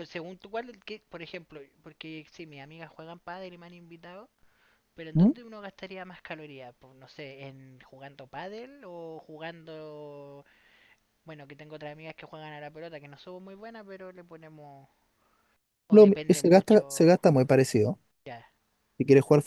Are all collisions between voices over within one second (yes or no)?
no